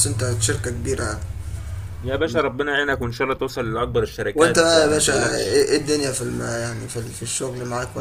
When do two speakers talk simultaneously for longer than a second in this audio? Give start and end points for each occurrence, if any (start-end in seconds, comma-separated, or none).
4.3-5.6